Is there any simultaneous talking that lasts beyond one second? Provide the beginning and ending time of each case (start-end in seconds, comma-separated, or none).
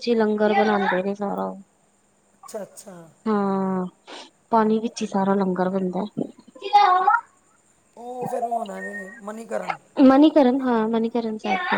none